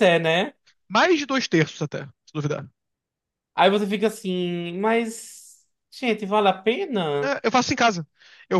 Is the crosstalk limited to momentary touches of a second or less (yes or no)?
yes